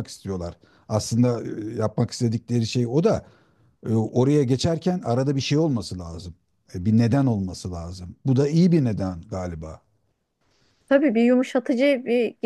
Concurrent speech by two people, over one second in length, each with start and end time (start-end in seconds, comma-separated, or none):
none